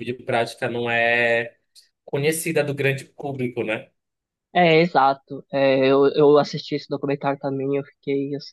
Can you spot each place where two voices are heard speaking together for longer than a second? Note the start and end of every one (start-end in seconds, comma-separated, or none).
none